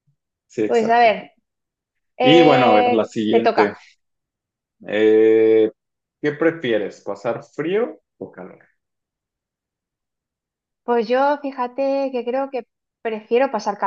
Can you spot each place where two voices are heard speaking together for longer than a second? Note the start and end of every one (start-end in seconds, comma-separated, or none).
2.2-3.7